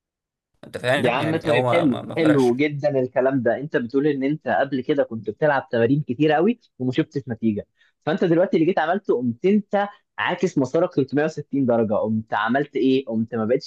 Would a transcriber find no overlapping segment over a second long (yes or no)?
no